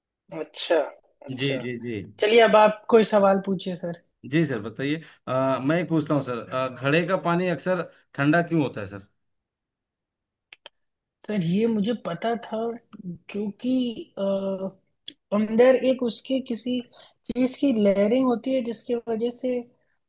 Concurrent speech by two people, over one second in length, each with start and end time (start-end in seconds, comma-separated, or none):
none